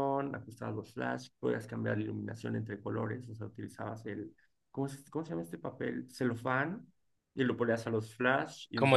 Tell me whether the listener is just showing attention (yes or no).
yes